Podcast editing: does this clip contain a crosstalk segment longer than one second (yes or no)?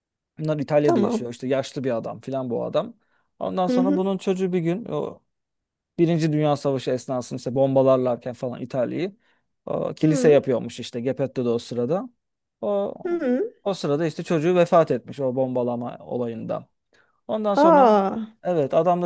no